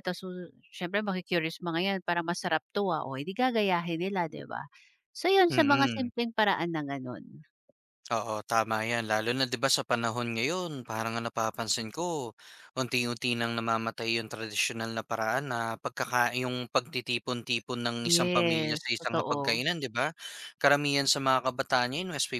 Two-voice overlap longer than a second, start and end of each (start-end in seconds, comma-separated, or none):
18.0-19.6